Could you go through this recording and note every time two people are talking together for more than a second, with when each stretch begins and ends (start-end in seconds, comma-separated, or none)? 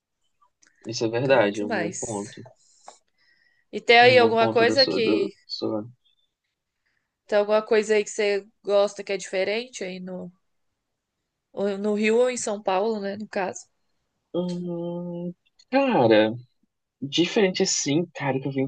1.2-2.4, 4.0-5.3